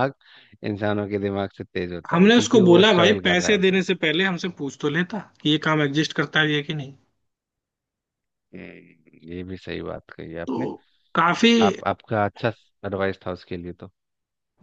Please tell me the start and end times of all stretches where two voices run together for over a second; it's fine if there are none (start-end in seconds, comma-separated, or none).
2.1-3.9